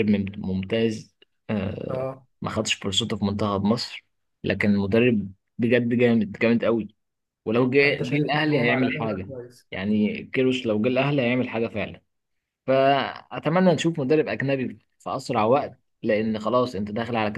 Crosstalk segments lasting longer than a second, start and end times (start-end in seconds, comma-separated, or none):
7.8-9.3